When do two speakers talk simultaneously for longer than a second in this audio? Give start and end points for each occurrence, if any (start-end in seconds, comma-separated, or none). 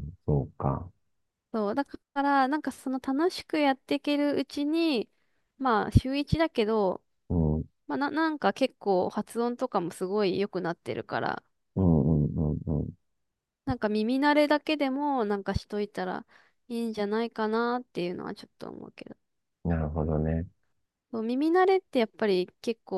none